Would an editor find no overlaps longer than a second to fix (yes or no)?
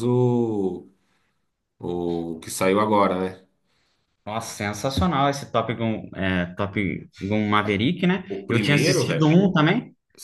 no